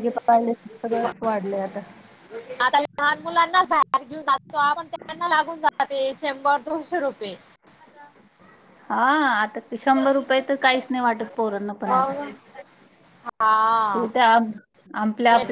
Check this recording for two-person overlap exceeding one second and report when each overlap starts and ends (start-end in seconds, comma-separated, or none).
none